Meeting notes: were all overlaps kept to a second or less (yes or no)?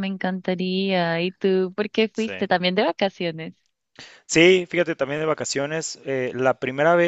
yes